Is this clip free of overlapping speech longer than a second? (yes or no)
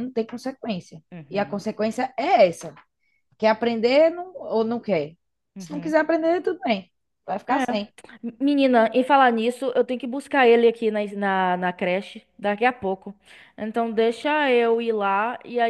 yes